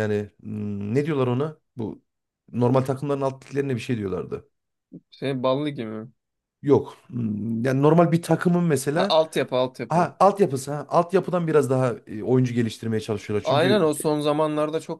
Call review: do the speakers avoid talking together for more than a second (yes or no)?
yes